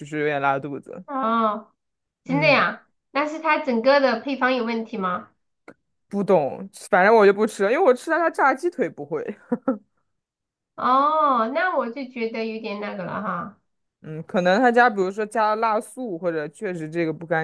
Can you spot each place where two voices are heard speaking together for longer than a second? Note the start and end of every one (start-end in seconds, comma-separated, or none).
none